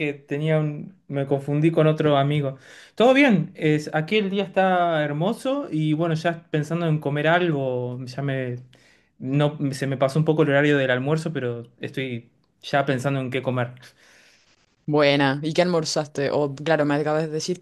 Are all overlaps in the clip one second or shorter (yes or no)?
yes